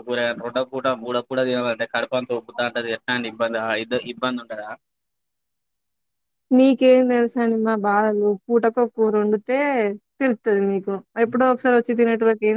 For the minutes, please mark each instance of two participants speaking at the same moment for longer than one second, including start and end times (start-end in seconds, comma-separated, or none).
none